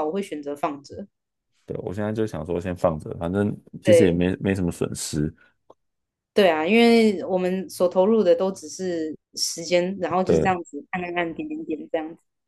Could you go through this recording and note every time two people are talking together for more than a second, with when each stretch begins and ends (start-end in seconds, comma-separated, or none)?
none